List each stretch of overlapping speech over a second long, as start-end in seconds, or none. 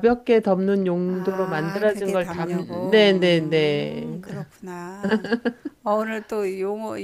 1.1-4.2